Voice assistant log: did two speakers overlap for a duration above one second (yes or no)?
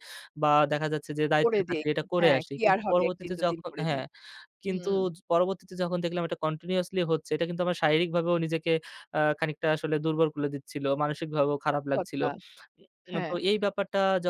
yes